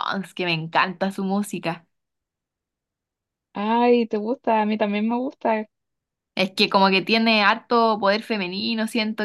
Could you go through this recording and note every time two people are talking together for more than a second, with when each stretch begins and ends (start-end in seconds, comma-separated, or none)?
none